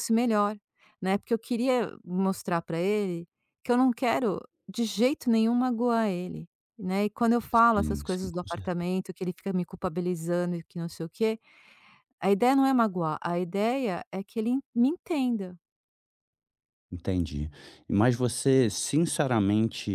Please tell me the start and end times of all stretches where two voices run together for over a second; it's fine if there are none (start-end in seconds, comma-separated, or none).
7.5-8.9